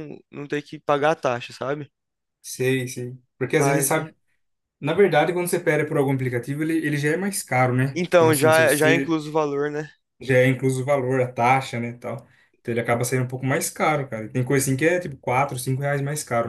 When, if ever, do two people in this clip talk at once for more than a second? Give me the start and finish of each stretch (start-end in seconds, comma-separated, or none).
7.9-9.2